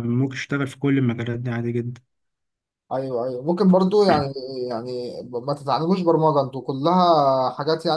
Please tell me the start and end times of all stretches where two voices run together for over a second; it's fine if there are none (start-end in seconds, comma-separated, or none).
none